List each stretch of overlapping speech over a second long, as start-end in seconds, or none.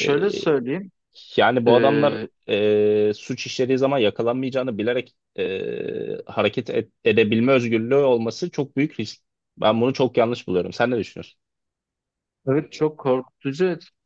none